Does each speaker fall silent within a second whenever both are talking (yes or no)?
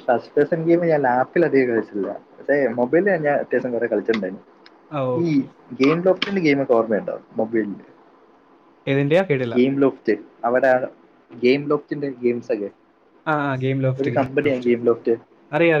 yes